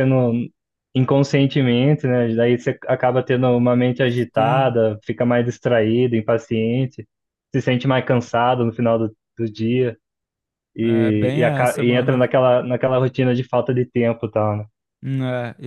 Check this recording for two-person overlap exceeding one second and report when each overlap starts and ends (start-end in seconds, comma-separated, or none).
10.8-12.2